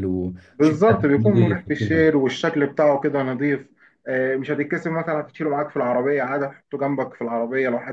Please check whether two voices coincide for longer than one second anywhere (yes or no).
yes